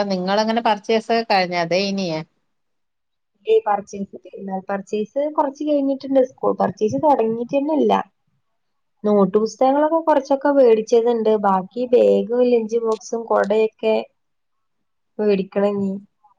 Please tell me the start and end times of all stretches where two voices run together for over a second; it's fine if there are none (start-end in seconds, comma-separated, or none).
none